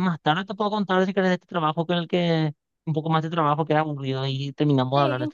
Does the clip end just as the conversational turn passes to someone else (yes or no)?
yes